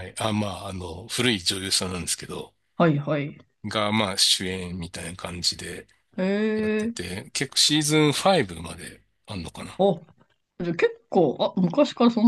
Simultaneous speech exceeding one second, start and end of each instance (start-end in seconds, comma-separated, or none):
none